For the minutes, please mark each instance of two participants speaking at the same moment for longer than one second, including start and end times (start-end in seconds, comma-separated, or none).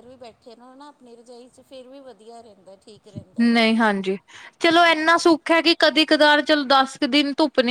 none